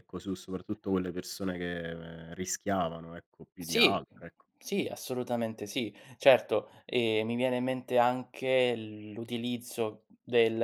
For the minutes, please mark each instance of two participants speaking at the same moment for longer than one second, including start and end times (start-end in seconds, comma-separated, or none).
none